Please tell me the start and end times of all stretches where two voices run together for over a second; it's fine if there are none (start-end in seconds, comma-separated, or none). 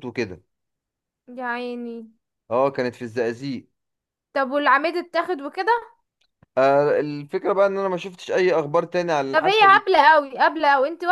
none